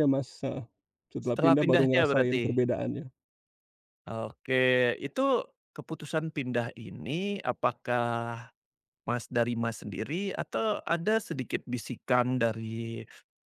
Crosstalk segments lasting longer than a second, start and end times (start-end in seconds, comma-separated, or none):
1.2-2.6